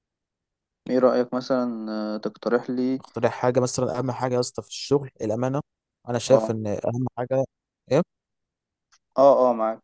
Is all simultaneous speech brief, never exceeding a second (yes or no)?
yes